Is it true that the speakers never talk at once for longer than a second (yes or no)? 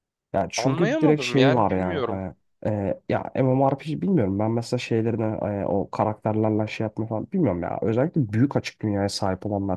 no